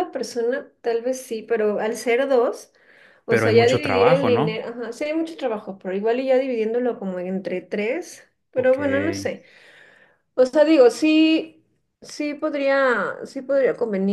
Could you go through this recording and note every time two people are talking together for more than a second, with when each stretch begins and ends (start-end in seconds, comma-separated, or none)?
3.3-4.6